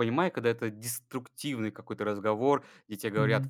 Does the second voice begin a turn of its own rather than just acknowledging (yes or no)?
no